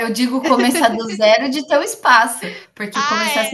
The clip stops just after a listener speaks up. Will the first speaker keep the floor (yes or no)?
yes